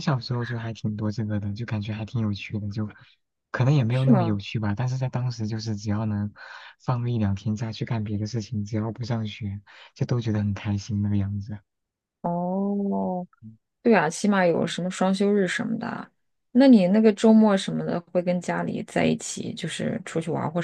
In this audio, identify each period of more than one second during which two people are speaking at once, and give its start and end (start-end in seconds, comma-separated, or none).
none